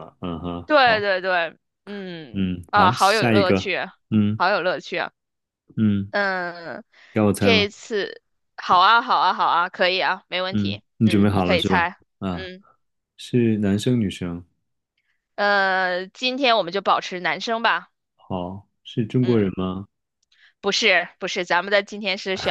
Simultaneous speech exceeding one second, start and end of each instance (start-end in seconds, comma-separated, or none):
2.3-3.7, 10.5-12.5